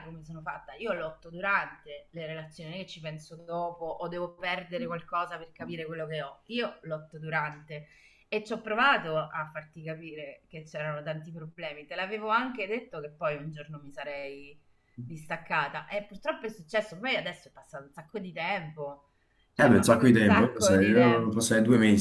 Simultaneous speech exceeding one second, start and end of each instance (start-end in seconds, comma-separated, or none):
19.6-21.4